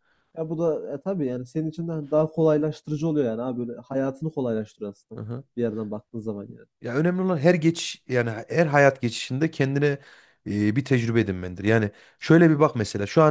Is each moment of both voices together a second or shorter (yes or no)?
yes